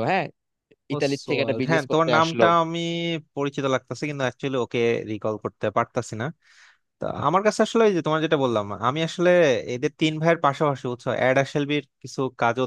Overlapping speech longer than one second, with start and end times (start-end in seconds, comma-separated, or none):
0.9-2.4